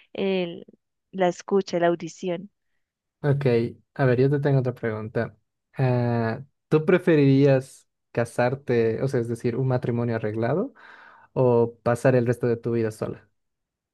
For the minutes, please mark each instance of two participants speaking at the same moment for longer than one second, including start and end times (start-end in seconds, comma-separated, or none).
none